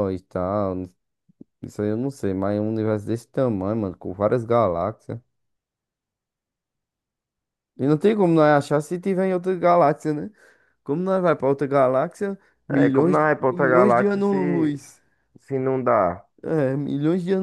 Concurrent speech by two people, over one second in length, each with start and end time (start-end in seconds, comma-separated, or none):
12.7-14.7